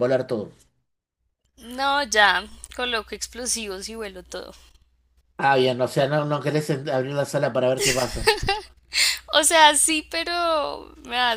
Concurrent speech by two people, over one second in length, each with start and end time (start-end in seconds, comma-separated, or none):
none